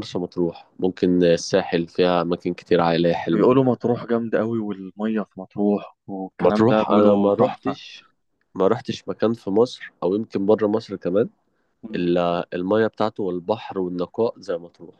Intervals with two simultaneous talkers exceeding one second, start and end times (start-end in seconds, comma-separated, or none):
6.4-7.7